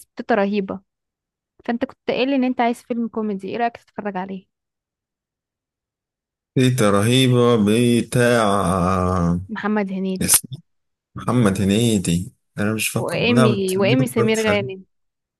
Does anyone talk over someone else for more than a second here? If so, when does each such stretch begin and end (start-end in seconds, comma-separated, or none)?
12.9-14.7